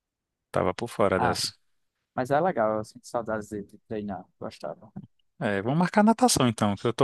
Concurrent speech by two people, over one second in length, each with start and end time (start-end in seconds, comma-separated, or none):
none